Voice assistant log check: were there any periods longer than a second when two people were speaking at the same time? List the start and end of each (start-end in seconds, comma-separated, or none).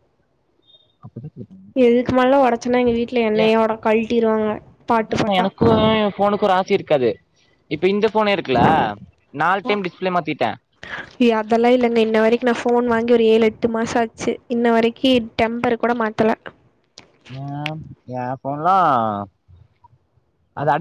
none